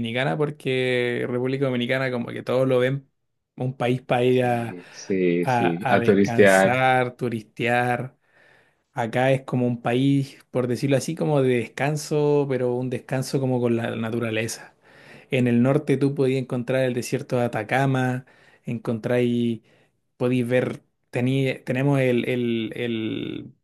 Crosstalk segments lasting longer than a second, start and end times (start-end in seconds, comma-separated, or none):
5.4-6.8